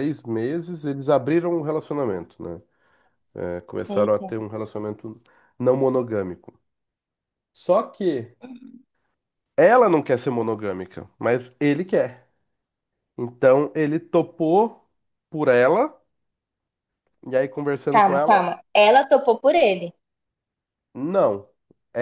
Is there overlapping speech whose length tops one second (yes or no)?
no